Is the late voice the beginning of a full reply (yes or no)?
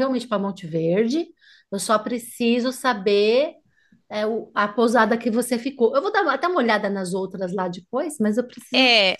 yes